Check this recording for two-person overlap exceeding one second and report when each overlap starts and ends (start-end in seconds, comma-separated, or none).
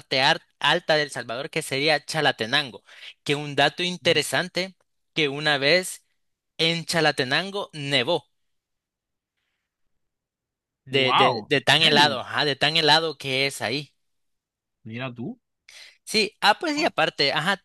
10.9-12.2